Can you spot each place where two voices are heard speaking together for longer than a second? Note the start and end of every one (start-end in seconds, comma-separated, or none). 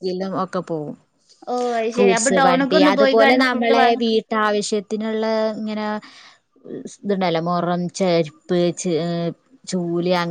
1.9-4.0